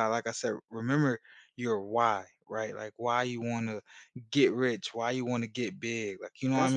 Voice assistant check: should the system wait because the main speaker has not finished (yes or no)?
yes